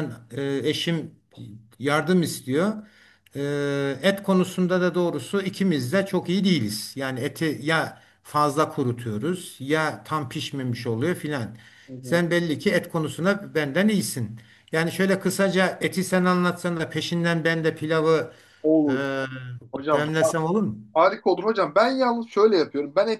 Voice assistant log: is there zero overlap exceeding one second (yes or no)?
yes